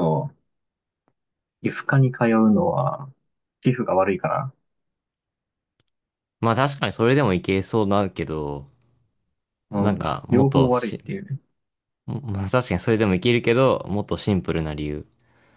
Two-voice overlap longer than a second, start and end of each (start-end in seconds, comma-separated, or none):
9.8-11.0